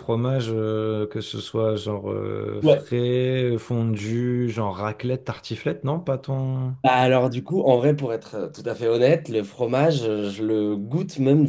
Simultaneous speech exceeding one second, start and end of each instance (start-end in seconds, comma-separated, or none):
none